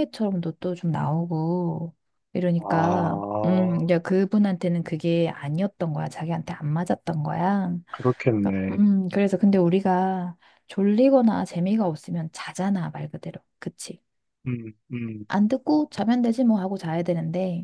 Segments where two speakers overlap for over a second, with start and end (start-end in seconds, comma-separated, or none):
2.6-3.9